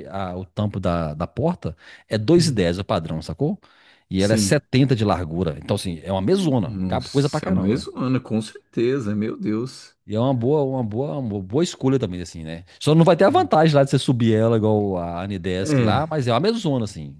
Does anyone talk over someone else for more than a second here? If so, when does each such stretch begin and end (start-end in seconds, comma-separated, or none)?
6.6-7.9